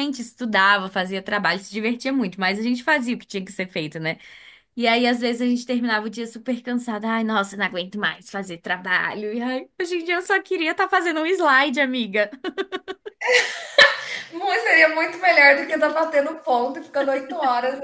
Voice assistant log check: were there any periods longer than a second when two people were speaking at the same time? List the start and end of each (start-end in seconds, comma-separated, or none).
none